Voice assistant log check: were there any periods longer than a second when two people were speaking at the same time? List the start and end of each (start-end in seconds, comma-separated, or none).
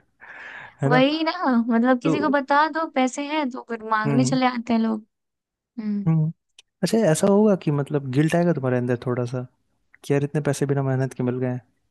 none